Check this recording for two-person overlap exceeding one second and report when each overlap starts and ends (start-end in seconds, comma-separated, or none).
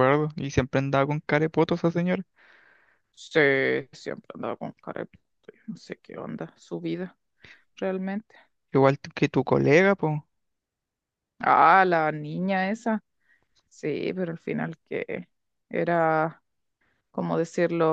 none